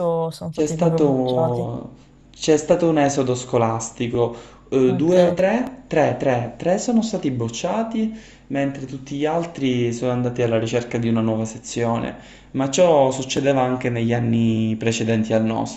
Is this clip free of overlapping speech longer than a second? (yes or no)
no